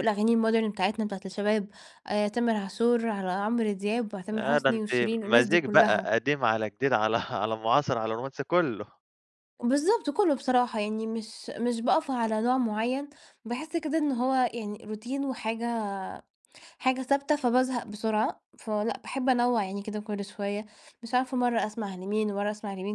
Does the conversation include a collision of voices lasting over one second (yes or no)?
yes